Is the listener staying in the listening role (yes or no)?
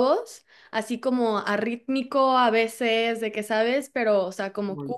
yes